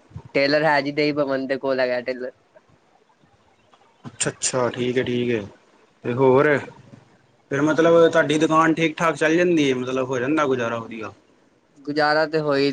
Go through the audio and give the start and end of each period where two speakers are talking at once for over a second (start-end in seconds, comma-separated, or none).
none